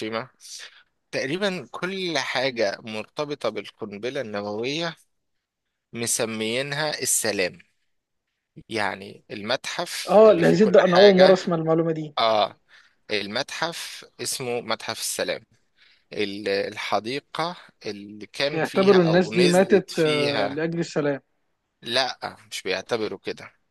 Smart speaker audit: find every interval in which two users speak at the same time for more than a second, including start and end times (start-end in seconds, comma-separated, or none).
10.1-11.4, 18.5-20.6